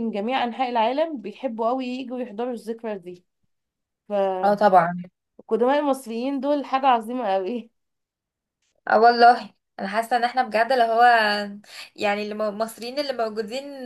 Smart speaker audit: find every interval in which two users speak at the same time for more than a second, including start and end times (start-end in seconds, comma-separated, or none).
none